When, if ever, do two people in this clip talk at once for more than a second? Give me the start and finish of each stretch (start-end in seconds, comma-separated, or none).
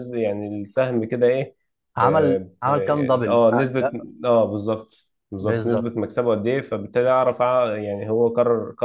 2.6-4.0